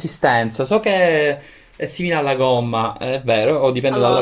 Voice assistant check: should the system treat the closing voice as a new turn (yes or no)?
yes